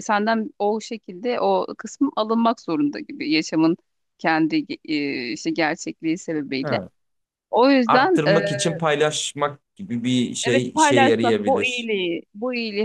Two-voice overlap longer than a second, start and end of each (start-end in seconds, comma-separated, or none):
10.4-11.9